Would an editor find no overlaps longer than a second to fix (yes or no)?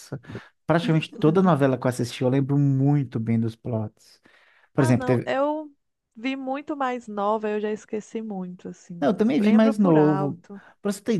no